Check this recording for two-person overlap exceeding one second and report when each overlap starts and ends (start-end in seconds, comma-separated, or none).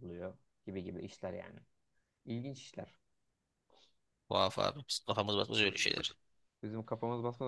none